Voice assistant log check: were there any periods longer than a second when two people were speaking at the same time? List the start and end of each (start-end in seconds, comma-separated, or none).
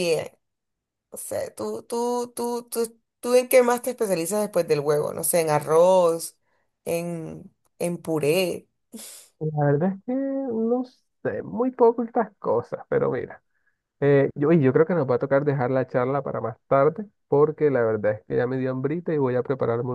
none